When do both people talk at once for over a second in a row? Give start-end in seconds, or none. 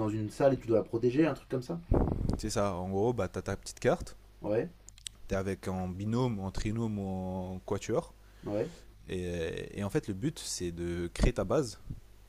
none